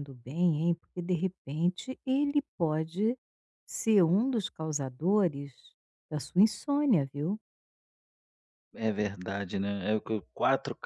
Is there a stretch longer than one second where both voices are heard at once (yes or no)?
no